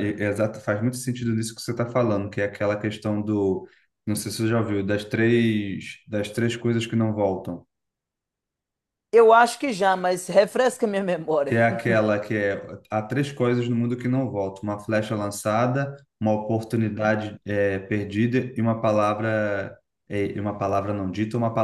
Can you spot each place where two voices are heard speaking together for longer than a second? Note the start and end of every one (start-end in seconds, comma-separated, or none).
none